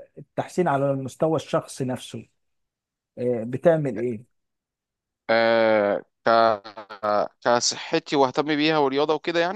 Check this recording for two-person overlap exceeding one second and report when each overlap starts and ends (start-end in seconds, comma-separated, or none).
none